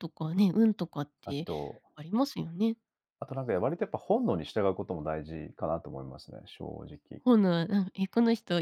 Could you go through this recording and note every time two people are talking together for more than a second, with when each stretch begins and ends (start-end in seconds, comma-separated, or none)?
none